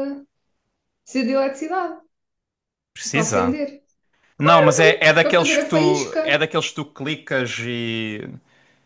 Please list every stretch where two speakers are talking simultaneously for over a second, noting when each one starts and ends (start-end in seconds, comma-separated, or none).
4.4-6.4